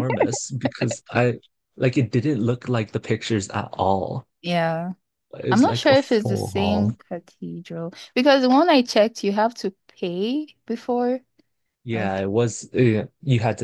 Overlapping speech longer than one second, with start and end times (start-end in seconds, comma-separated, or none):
5.5-6.9